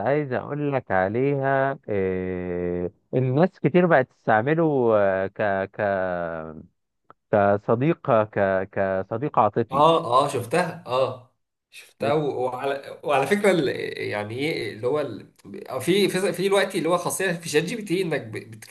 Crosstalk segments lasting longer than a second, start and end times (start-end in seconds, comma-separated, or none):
none